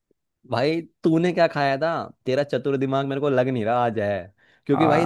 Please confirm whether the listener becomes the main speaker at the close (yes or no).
no